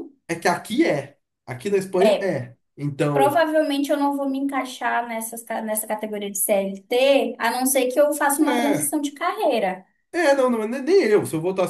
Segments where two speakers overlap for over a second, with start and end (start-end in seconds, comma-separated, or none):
none